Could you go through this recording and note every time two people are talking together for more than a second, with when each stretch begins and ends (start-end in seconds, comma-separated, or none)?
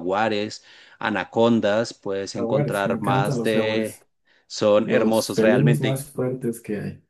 2.3-4.0, 4.8-6.0